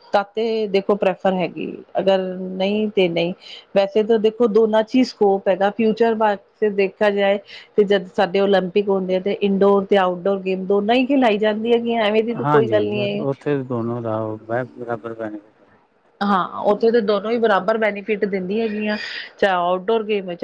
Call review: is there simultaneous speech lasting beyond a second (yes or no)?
no